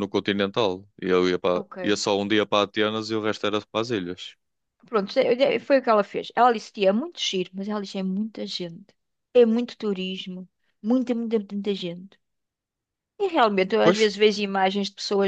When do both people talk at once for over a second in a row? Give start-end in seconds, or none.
none